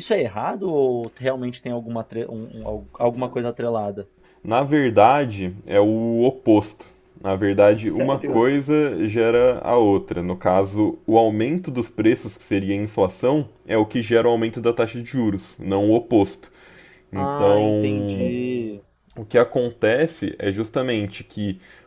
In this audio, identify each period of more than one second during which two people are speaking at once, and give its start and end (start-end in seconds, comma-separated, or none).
17.1-18.4